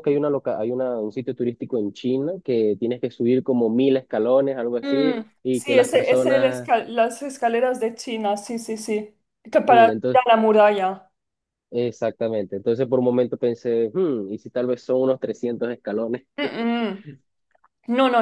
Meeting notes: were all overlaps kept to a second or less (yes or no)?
no